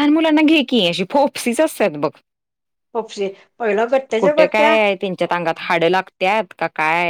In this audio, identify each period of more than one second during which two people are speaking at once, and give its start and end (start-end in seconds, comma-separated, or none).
none